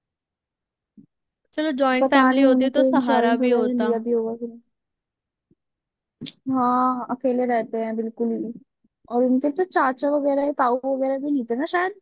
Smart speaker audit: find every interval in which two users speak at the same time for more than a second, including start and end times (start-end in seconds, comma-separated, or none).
2.0-3.9